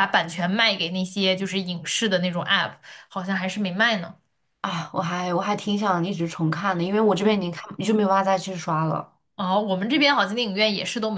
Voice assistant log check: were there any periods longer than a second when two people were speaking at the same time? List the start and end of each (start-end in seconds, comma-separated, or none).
none